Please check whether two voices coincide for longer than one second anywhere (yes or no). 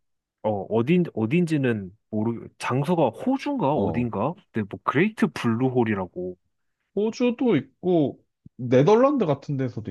no